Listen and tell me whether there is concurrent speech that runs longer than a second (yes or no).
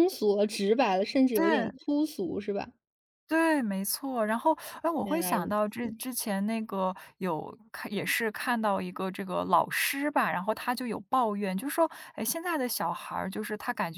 no